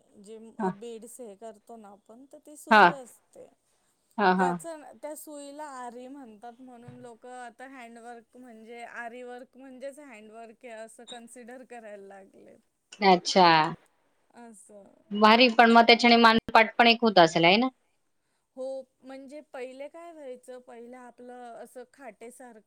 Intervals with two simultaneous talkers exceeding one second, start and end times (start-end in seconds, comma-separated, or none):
none